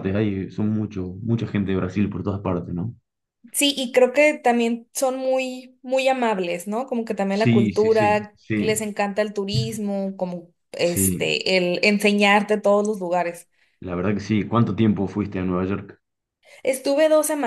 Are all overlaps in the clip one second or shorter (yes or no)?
no